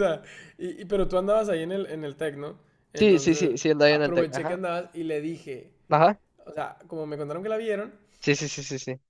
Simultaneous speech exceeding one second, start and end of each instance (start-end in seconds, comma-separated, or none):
3.0-4.6